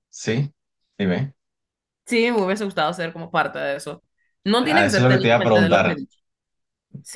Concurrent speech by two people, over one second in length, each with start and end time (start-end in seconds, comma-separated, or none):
4.6-5.9